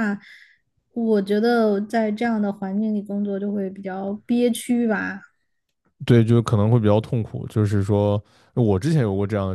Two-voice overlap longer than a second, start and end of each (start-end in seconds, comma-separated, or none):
none